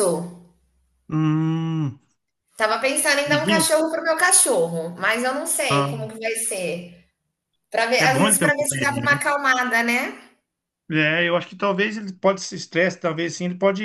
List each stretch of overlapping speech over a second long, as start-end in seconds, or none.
8.0-9.2